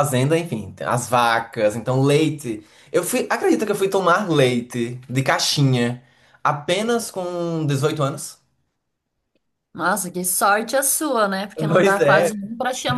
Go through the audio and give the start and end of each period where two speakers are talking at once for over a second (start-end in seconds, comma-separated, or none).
none